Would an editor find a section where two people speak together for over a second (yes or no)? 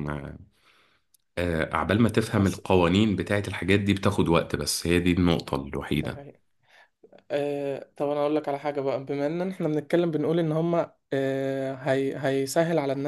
no